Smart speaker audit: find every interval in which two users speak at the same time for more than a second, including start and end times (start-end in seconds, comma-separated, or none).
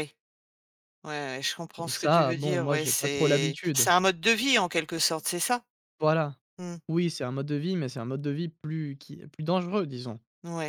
1.8-3.9